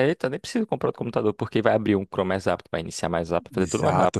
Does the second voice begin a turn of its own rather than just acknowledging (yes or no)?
yes